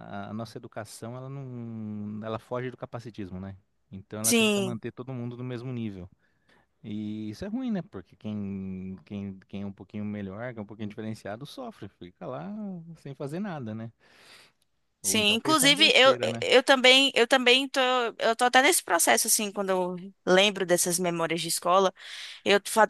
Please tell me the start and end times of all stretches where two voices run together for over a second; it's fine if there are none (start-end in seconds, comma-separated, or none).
15.0-16.4